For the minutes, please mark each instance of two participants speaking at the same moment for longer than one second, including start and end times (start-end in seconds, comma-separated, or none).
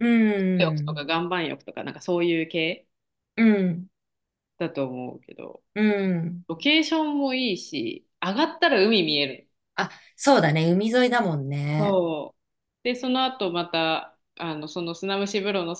none